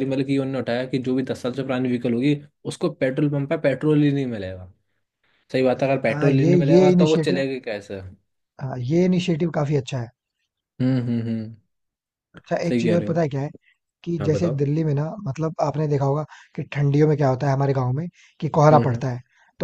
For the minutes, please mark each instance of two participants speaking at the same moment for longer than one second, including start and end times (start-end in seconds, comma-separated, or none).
6.1-7.4